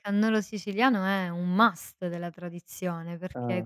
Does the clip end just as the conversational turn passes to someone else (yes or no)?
no